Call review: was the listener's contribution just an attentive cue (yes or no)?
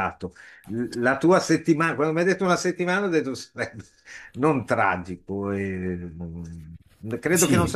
yes